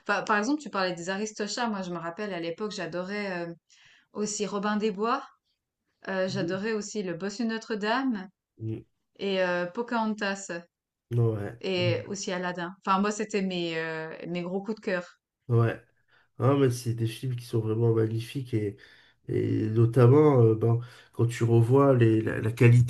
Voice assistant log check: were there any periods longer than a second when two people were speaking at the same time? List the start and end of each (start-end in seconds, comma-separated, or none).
none